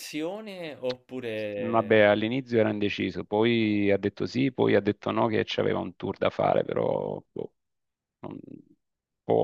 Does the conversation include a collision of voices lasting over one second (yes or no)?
no